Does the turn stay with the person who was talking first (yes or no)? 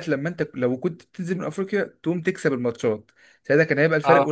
yes